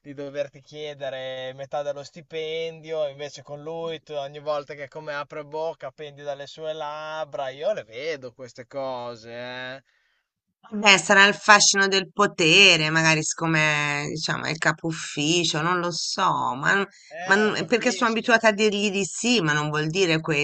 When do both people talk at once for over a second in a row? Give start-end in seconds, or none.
17.2-18.5